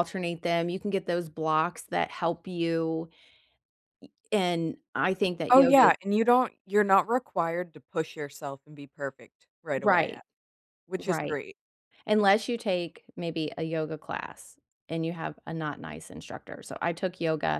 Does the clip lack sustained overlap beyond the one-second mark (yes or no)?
yes